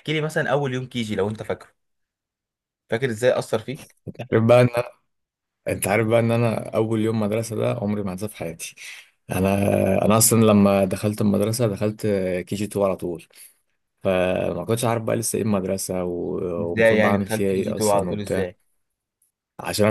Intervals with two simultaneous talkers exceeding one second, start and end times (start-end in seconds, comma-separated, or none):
16.6-18.4